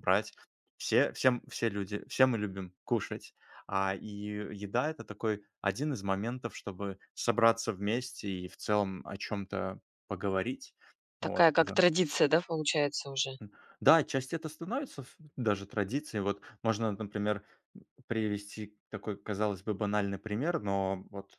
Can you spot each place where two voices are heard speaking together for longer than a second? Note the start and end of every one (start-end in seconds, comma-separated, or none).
none